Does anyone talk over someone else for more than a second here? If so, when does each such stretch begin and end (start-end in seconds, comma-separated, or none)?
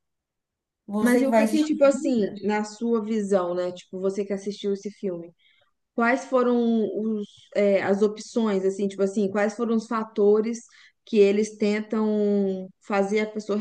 1.0-2.4